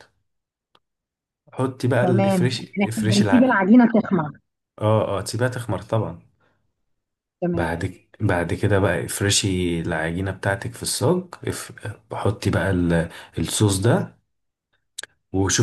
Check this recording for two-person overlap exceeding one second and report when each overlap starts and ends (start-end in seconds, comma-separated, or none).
2.0-3.6